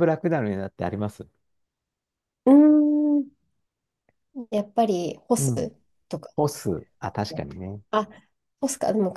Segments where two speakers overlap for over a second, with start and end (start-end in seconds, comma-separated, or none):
none